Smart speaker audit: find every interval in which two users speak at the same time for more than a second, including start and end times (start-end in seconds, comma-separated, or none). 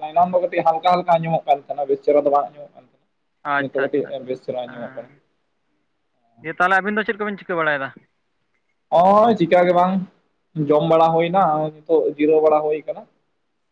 3.6-5.1